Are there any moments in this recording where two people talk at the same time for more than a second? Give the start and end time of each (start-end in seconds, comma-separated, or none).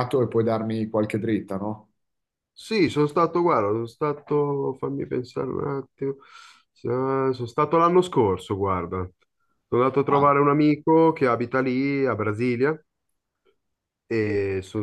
none